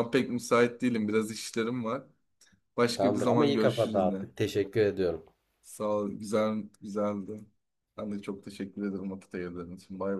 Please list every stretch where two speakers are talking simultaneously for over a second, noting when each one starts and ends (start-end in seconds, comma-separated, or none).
3.0-4.3